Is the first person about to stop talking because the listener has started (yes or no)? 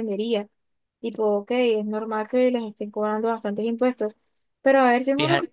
no